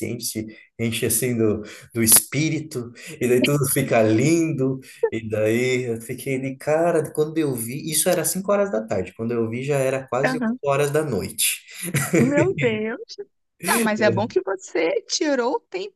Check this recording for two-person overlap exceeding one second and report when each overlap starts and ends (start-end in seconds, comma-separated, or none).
none